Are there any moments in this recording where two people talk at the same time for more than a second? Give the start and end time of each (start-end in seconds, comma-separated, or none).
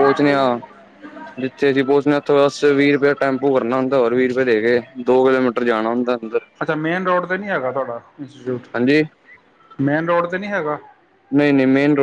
none